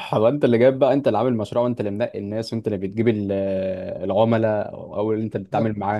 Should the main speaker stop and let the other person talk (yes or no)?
no